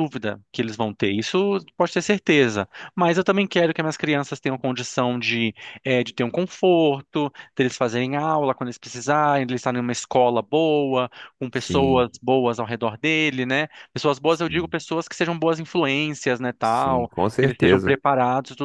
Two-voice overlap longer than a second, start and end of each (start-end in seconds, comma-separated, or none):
16.6-18.0